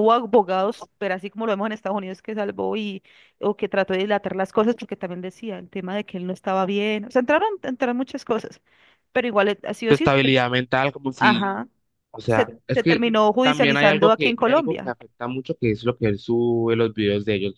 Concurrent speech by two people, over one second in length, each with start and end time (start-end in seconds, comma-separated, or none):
12.3-15.0